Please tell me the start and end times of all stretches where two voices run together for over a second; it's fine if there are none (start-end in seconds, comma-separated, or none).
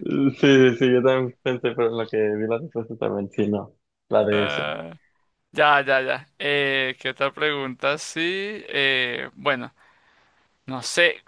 none